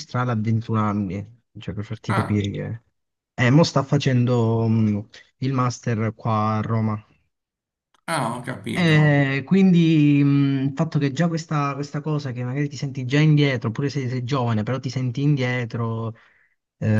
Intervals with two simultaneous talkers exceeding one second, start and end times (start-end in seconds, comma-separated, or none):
none